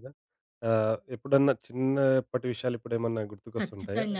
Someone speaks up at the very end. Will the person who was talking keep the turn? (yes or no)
no